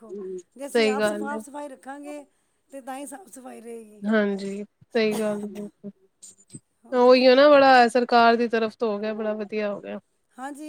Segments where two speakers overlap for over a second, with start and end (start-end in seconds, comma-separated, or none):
none